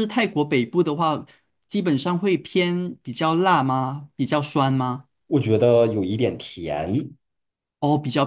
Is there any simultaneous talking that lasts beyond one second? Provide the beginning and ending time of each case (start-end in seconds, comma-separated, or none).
none